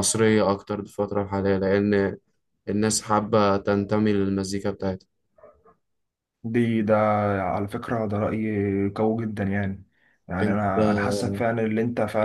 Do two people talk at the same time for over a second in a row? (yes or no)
no